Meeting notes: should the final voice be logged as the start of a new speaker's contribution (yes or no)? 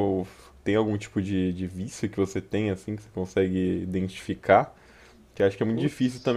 no